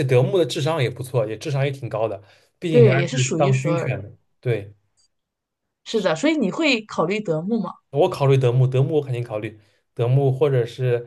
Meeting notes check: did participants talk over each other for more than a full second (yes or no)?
yes